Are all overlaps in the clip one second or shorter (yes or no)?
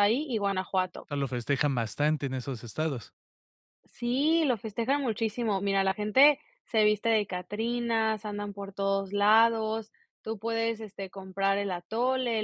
yes